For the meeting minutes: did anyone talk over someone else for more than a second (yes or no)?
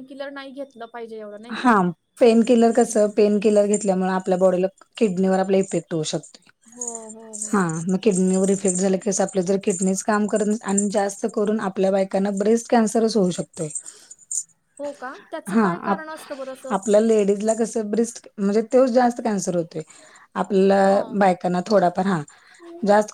no